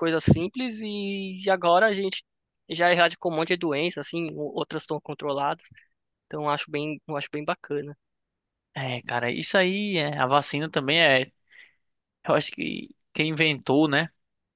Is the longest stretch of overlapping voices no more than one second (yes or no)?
yes